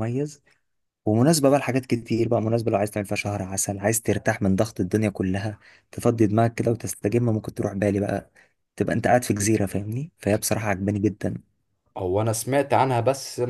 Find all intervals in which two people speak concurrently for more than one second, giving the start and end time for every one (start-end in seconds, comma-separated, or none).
none